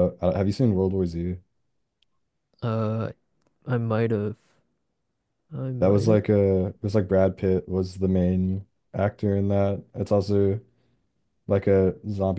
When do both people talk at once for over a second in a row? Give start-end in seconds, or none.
none